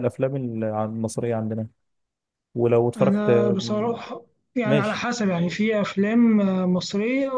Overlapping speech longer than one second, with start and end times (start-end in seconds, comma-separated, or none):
none